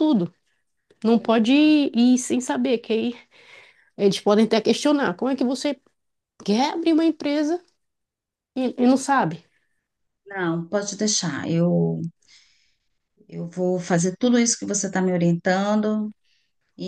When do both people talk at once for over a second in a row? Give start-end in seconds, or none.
none